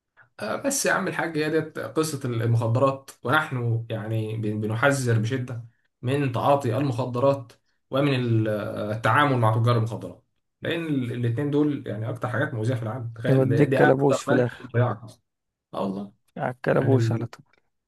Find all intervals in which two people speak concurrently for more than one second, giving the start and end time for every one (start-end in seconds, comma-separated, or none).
13.3-14.7